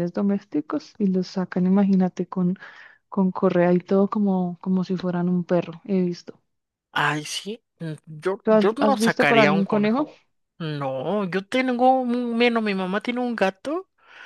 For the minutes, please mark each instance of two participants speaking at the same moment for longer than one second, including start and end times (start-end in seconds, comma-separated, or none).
8.4-10.1